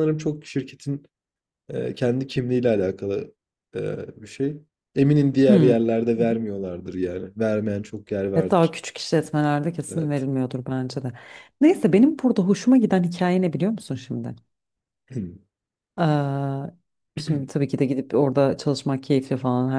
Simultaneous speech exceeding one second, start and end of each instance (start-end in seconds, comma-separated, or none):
none